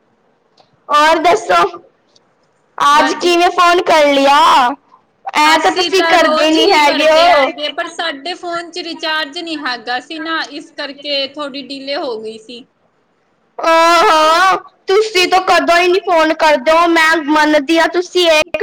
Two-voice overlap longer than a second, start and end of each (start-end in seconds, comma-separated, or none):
5.6-7.5